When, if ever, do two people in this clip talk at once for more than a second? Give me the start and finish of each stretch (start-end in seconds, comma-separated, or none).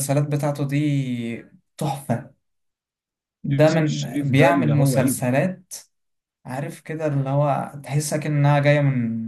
3.5-5.1